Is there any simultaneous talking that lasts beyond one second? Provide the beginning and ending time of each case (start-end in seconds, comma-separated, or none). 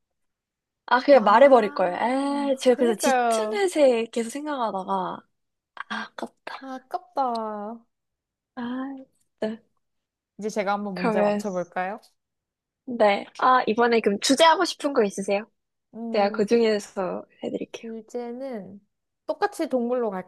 1.1-3.6